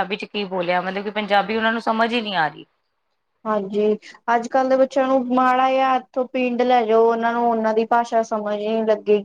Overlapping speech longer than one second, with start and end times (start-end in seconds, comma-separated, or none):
none